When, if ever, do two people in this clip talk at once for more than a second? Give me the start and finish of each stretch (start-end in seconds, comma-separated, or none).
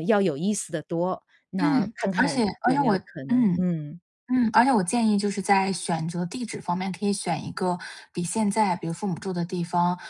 1.6-3.7